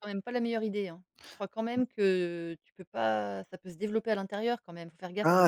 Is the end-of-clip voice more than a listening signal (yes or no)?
yes